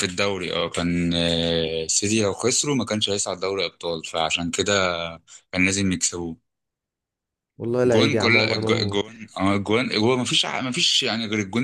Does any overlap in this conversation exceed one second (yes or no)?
yes